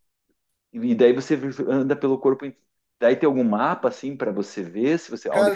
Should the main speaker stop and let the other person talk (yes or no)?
yes